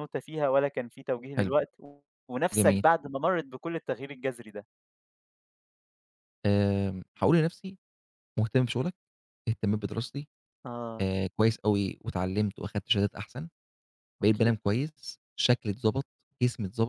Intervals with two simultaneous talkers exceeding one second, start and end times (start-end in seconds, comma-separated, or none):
none